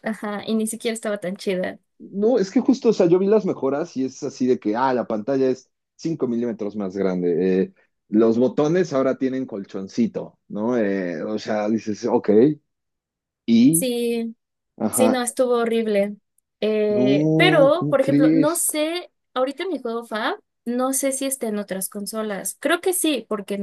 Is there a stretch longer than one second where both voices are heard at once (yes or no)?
yes